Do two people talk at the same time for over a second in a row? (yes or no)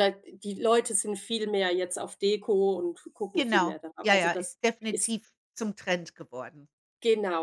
yes